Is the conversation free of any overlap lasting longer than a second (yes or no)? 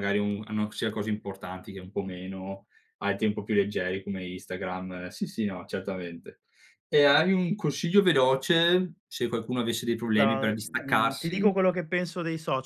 no